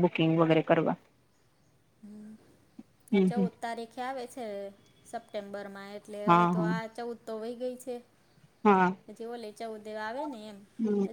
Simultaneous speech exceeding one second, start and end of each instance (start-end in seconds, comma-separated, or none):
none